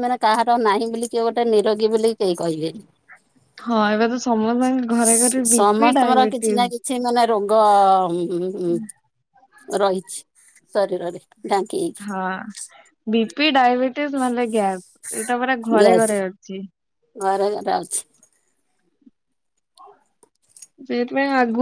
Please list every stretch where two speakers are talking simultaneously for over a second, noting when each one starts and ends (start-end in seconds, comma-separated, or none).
none